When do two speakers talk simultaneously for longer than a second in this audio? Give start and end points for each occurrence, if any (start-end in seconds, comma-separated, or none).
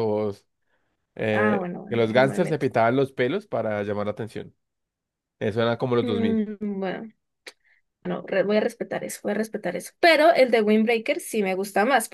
1.3-2.7